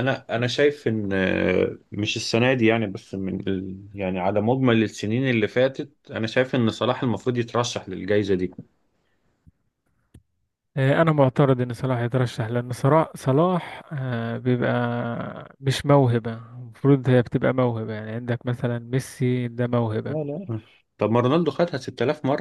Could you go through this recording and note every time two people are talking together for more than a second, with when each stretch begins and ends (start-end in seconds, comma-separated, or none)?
none